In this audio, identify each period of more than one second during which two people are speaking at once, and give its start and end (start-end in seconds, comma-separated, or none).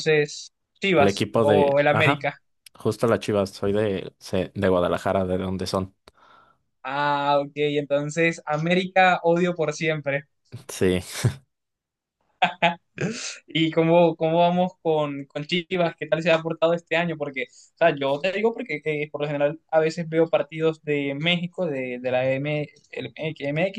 0.9-2.3